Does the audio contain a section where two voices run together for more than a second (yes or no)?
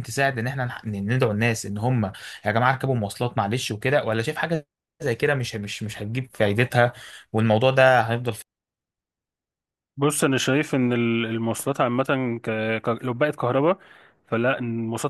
no